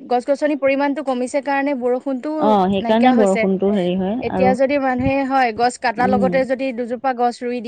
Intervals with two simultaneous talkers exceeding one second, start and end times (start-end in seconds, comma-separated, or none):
none